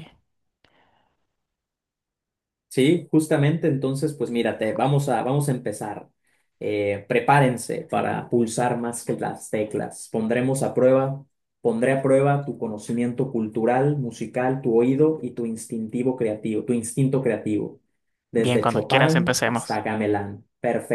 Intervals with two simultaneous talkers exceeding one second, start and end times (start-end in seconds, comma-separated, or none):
18.4-19.8